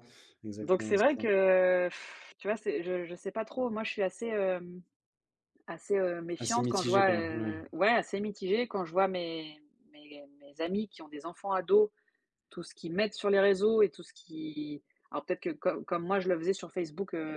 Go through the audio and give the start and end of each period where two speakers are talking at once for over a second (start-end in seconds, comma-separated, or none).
6.4-7.6